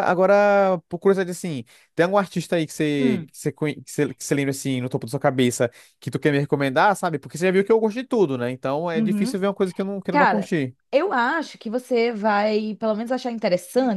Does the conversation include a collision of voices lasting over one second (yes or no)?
no